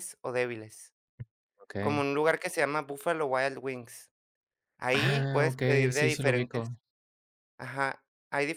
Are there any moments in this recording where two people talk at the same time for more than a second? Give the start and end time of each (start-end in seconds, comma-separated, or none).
4.9-6.7